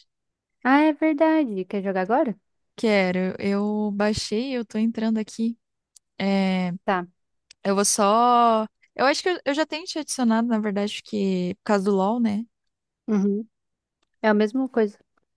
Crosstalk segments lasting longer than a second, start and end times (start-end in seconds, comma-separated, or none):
none